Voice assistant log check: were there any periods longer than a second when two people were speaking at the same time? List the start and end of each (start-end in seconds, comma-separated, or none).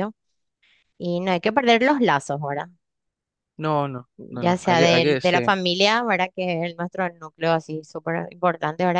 4.2-5.5